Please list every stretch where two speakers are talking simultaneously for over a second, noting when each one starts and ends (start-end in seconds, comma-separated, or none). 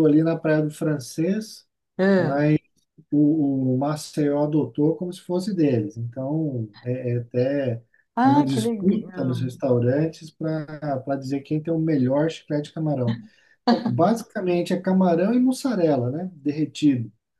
8.2-9.5